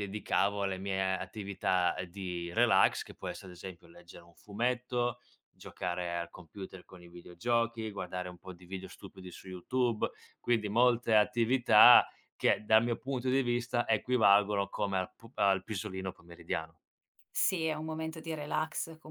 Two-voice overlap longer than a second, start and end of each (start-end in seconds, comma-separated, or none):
none